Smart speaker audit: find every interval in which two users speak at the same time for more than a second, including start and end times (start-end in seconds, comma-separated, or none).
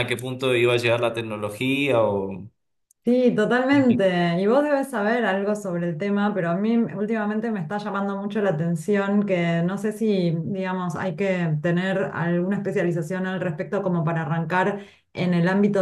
none